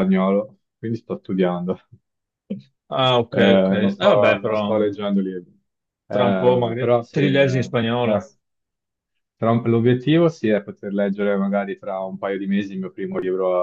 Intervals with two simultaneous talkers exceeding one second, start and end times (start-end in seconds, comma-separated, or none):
3.3-4.8, 6.1-7.7